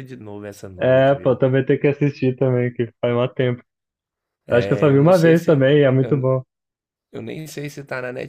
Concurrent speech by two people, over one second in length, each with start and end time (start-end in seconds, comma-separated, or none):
4.5-6.3